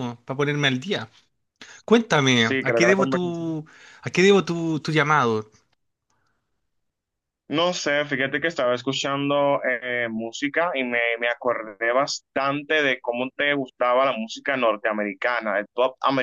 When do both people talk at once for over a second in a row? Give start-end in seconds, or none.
2.3-3.5